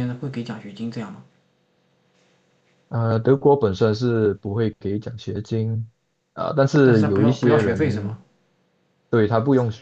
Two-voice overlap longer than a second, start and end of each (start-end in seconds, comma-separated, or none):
6.8-8.2